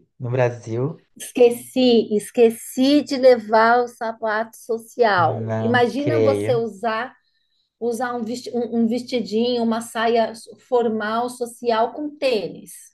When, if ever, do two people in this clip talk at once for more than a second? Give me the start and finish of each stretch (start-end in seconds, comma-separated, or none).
5.2-6.6